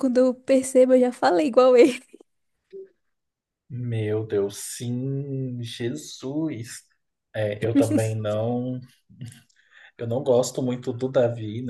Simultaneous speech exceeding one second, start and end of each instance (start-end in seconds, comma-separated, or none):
none